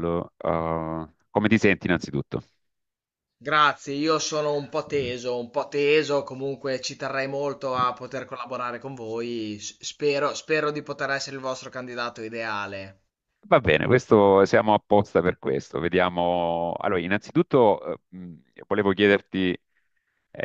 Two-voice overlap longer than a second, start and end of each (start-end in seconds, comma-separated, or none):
none